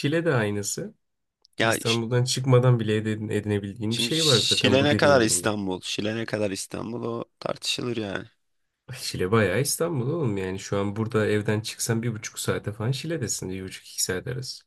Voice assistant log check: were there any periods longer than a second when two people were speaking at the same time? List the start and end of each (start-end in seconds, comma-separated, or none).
3.9-5.5